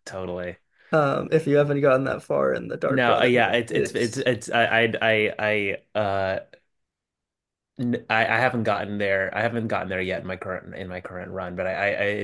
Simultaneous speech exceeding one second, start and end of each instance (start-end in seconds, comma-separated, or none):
2.8-4.3